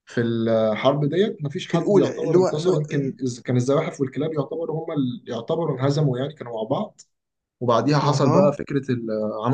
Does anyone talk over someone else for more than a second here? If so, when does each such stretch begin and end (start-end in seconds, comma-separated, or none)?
1.7-3.2